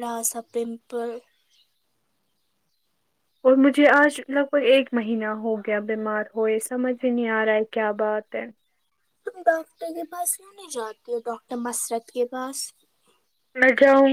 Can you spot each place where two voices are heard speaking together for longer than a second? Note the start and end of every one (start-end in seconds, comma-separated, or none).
none